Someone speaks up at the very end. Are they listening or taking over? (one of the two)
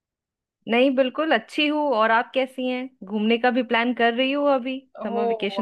taking over